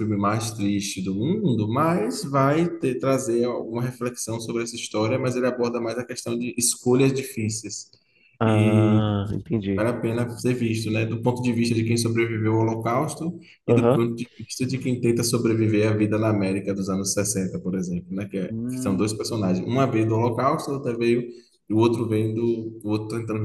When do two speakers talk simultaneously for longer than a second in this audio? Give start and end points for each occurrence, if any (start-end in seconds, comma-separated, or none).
none